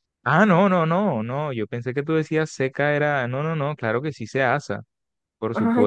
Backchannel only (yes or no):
no